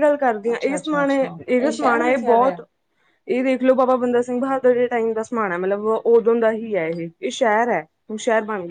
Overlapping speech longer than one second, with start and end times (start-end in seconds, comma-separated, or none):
0.5-2.6